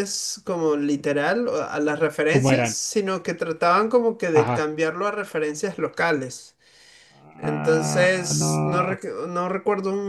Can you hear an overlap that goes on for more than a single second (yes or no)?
yes